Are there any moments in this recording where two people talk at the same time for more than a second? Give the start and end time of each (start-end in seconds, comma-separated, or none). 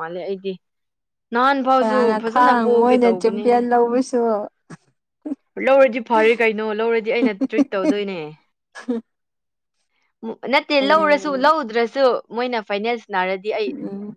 1.8-3.6